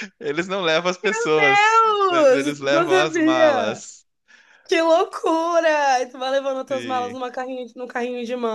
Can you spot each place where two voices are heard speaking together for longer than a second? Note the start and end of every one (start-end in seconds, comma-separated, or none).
1.5-3.9